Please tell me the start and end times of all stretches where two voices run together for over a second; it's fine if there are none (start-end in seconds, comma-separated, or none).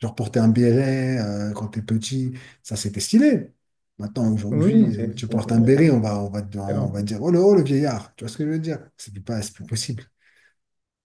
4.5-5.8